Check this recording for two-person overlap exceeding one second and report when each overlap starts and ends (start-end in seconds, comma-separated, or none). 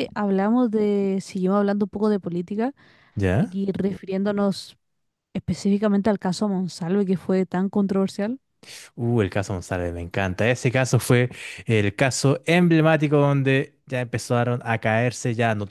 none